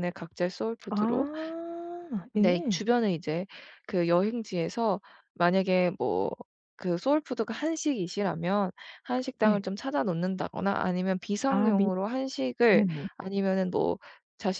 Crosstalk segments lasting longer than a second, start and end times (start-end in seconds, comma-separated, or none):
none